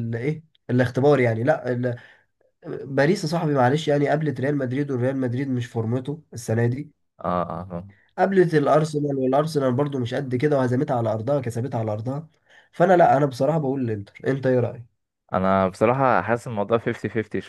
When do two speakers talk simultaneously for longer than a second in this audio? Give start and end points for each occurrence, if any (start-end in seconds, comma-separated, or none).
none